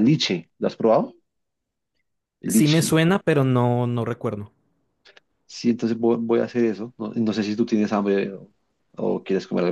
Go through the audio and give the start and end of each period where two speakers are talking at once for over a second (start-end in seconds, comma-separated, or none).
none